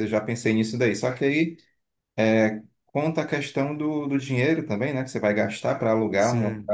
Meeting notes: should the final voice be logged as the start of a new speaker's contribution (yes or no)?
no